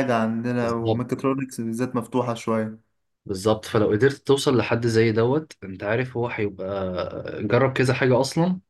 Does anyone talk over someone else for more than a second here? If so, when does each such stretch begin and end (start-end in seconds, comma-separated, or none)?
none